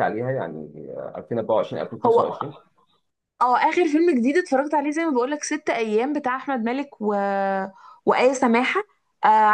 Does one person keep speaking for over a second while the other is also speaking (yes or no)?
no